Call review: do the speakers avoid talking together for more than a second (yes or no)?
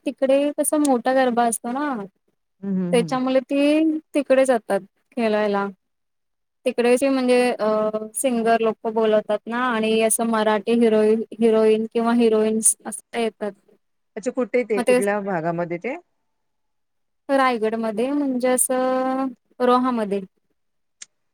yes